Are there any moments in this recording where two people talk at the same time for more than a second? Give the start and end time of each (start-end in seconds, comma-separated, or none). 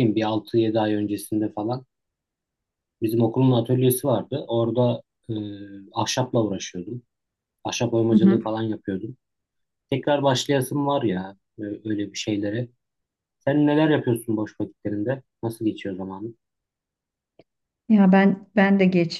none